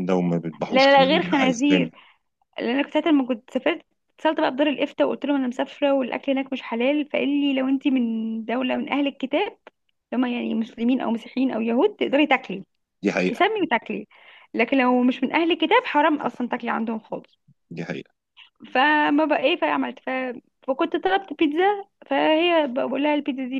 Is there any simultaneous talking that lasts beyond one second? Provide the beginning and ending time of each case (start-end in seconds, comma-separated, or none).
0.7-1.9